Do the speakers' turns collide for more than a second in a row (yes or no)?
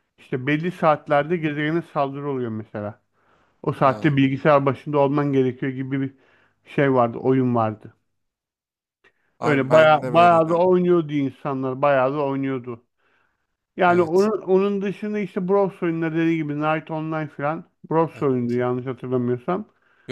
yes